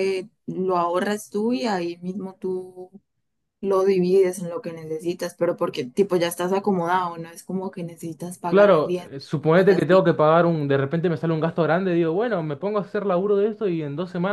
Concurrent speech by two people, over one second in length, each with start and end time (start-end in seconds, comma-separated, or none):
8.5-10.0